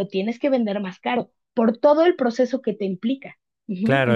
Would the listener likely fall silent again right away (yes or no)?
no